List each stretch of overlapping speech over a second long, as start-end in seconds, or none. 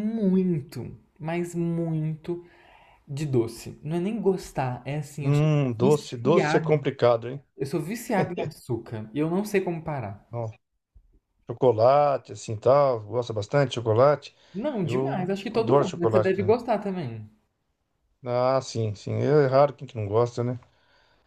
5.2-6.7, 14.8-16.5